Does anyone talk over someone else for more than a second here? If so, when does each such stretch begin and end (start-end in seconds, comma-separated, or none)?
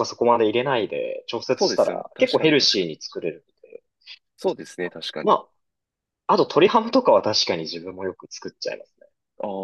1.6-2.9